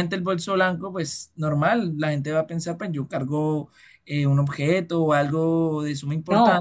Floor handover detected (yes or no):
yes